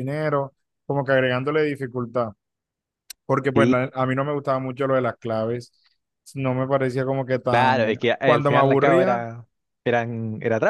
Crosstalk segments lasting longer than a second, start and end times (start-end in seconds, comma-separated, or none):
7.5-9.2